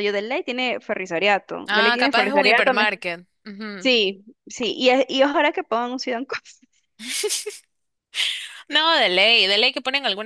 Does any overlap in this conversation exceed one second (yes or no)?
yes